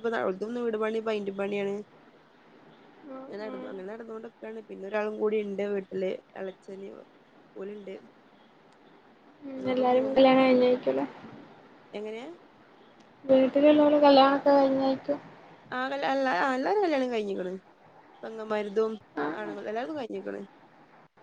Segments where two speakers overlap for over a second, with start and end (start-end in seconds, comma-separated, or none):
none